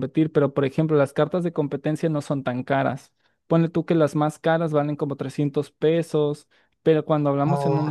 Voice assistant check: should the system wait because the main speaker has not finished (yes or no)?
yes